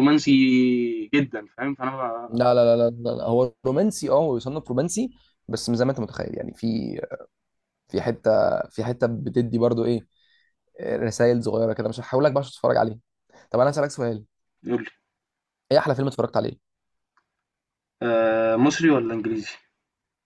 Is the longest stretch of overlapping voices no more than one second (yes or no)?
yes